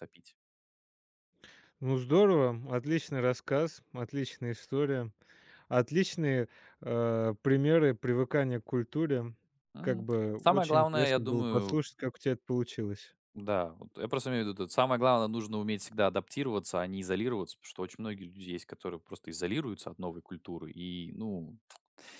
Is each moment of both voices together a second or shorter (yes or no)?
no